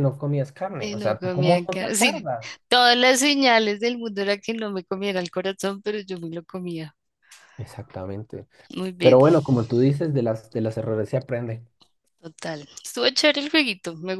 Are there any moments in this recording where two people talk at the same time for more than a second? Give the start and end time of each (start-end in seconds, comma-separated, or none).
0.8-2.3